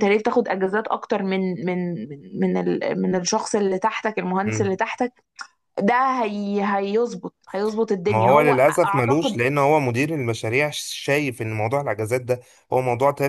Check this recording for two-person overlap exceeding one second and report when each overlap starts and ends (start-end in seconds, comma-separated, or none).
8.1-9.4